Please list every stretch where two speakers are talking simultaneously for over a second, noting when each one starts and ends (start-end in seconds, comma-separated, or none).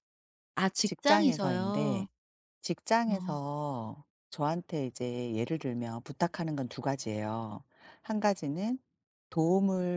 0.8-2.1